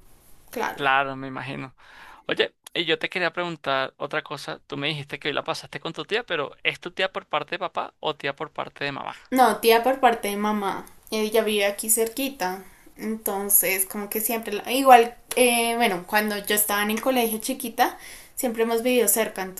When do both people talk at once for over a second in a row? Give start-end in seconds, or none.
none